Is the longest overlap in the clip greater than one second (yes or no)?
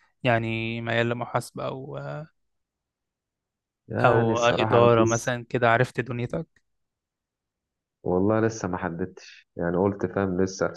yes